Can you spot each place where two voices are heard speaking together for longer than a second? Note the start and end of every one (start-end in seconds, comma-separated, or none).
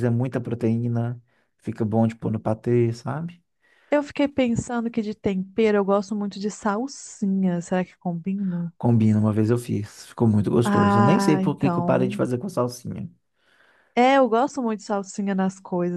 10.7-12.2